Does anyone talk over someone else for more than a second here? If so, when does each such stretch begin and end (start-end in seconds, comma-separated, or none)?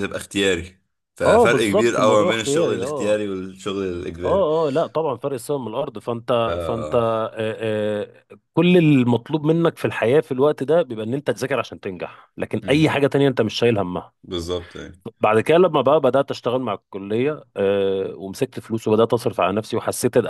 1.2-3.2